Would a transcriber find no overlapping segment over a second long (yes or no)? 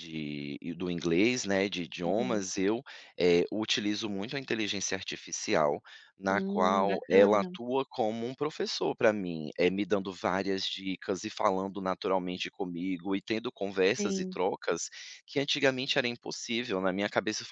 no